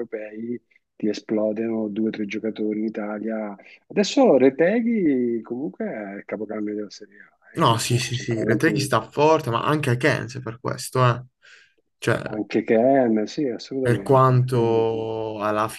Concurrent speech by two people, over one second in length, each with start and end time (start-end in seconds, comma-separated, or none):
7.6-8.9, 13.8-15.1